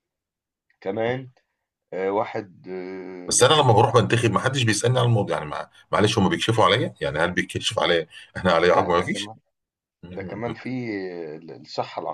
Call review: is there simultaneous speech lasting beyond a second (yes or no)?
no